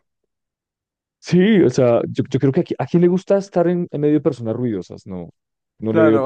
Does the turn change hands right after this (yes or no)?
yes